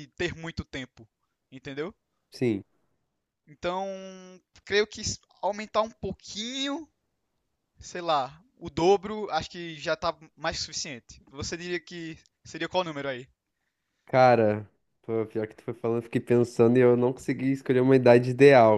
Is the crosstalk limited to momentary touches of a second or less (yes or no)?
yes